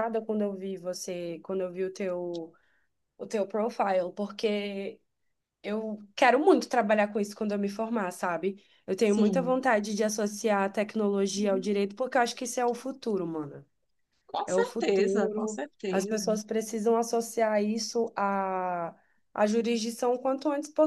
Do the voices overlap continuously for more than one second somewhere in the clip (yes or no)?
yes